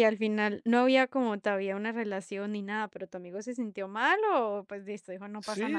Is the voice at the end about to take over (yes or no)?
yes